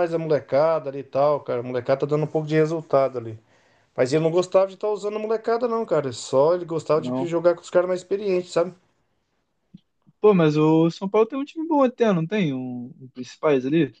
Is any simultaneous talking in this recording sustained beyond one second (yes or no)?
no